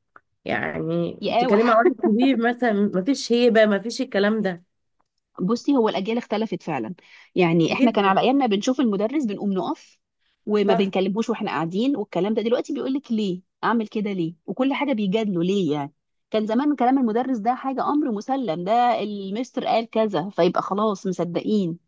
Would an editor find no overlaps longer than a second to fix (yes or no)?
yes